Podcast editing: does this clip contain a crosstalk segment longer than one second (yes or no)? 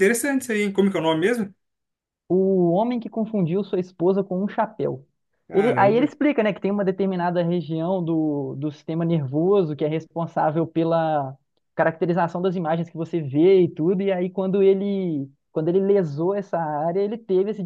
no